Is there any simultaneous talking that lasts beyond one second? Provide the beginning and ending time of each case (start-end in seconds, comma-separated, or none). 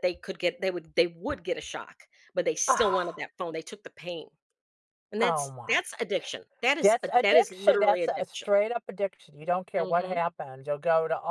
6.8-8.5